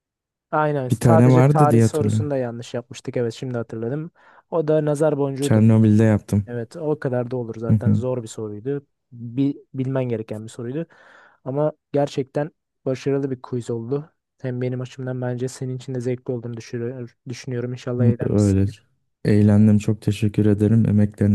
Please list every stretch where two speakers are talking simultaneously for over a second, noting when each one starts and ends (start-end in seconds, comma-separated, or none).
0.9-2.3